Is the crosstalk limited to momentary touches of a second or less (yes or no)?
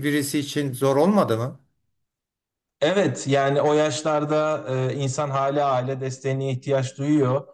yes